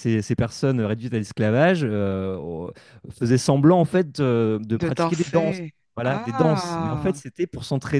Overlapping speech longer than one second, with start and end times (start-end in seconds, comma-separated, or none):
4.8-7.2